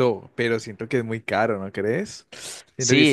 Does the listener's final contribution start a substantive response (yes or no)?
yes